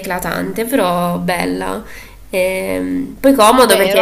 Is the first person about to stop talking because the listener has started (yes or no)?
yes